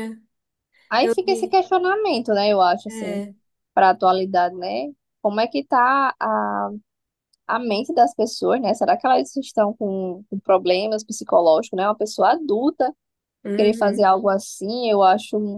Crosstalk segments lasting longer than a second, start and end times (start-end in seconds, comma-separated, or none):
none